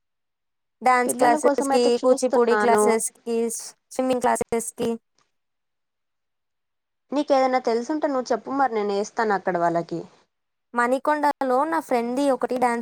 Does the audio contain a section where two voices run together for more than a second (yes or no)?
yes